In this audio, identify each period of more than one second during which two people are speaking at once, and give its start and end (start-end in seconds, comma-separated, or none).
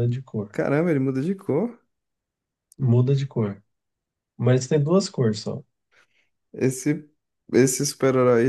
none